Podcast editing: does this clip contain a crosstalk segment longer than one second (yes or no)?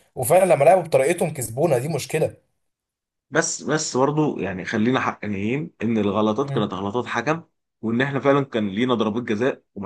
no